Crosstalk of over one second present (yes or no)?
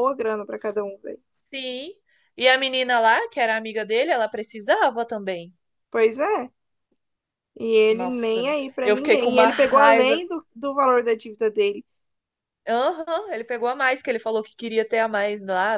yes